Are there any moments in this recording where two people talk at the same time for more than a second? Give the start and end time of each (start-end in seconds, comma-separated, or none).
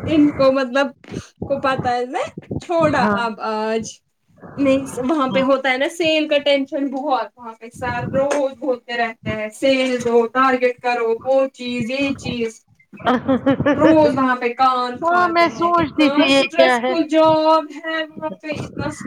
15.0-16.9